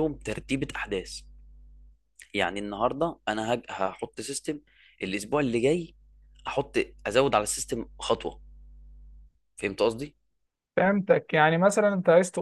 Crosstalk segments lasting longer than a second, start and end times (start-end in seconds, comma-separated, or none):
none